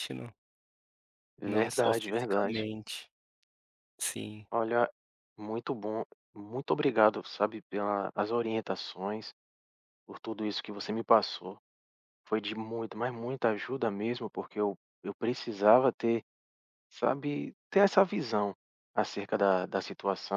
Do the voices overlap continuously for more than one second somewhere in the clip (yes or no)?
yes